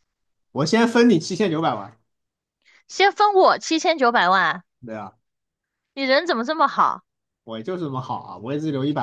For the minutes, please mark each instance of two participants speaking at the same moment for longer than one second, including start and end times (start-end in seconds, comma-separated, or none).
none